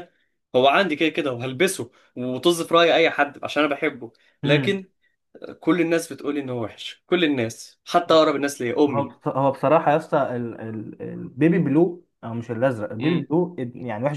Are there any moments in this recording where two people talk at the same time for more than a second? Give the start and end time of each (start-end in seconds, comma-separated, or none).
none